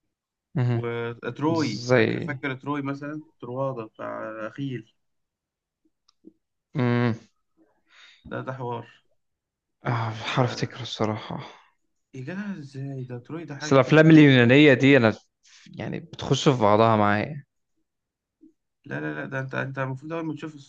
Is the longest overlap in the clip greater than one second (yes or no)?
no